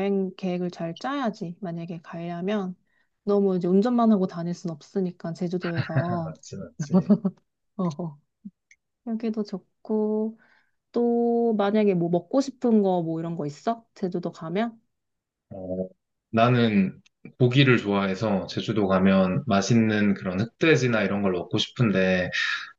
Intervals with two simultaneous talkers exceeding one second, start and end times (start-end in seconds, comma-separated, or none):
none